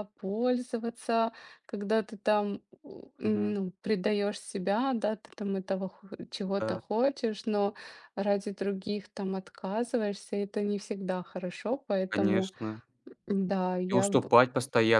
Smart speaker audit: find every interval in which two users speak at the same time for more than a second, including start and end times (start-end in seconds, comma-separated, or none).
none